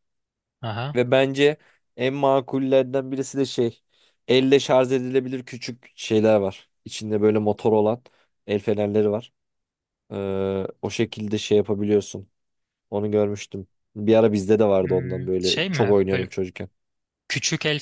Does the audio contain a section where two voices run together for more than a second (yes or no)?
yes